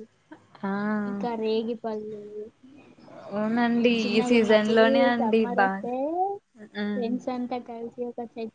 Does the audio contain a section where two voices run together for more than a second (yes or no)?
yes